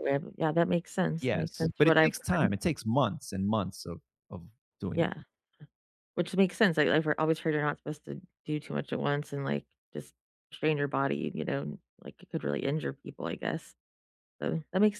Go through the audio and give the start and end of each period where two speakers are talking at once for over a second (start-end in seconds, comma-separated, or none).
1.2-2.5